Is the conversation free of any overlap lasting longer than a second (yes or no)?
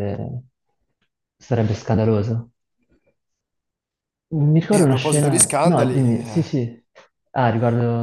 no